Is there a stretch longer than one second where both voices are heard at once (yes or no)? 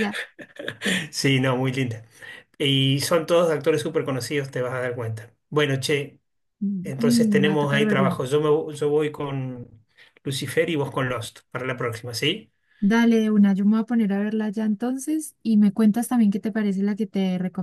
yes